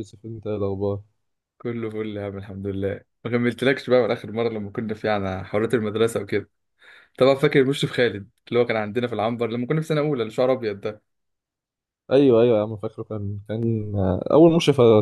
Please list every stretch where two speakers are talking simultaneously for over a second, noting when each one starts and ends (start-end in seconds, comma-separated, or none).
none